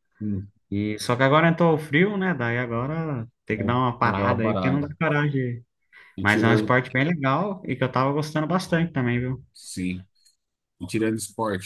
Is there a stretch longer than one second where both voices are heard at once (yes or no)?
yes